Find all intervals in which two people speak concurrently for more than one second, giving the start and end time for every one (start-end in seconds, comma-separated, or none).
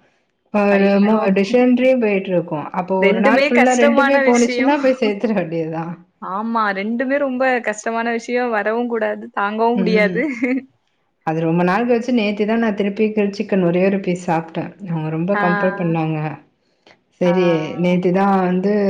3.1-4.7